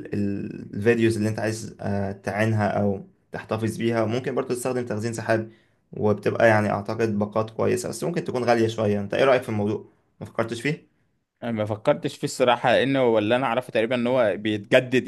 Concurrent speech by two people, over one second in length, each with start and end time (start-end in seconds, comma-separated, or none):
none